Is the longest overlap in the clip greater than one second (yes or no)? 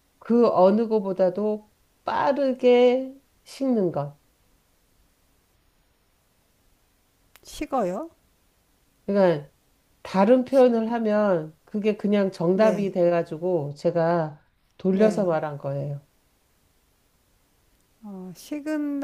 no